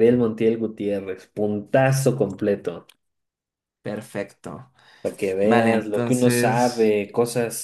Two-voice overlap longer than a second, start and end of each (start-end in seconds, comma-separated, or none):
5.4-6.9